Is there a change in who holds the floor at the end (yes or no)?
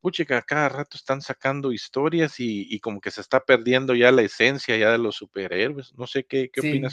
yes